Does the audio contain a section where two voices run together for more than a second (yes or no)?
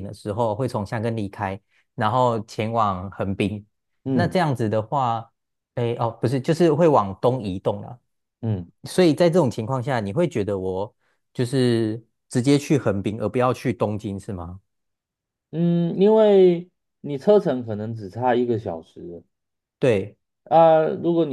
no